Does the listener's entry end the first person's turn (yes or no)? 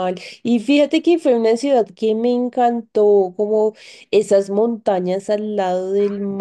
no